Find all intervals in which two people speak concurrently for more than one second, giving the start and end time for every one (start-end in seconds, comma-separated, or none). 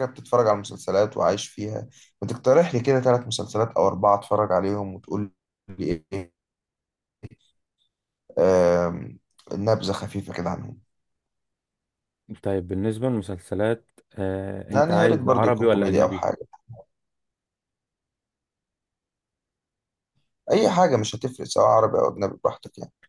14.7-16.2